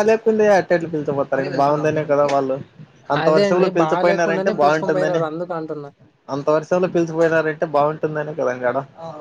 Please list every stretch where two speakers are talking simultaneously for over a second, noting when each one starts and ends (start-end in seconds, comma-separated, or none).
3.2-5.2